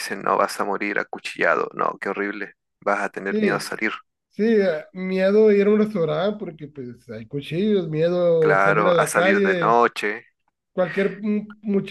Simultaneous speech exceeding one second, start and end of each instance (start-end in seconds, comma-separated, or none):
8.4-9.8